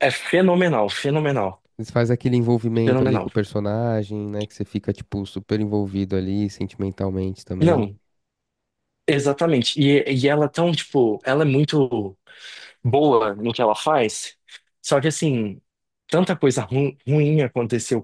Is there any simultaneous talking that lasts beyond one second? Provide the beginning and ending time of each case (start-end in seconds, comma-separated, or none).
none